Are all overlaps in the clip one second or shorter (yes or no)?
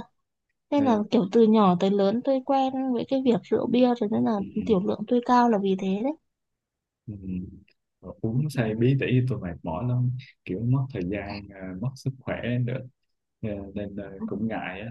yes